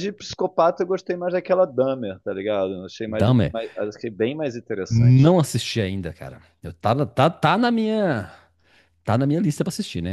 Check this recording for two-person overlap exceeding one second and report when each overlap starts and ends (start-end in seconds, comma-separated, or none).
none